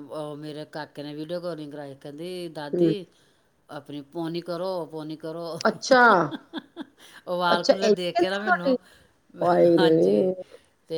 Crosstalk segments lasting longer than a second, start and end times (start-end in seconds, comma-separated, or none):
7.5-8.7